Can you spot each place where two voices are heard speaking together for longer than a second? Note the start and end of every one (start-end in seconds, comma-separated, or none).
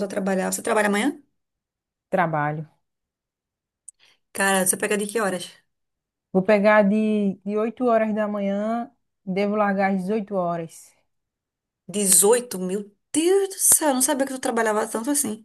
none